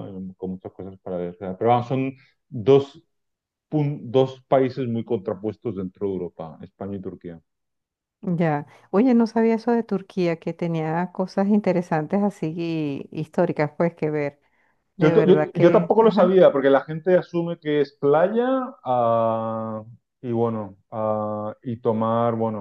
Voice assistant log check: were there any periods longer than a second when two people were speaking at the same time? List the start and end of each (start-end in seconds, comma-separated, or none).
15.0-16.4